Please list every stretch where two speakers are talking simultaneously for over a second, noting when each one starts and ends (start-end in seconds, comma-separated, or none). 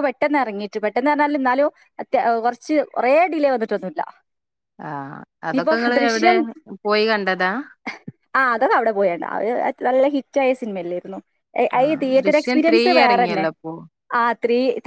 11.8-13.5